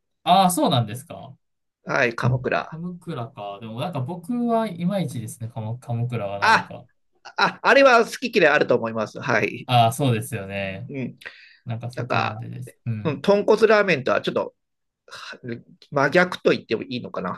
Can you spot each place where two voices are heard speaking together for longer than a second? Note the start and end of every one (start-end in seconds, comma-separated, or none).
none